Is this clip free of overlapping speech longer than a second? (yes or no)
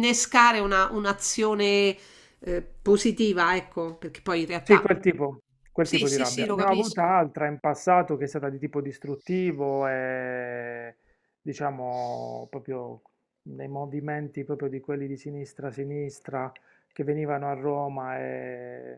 no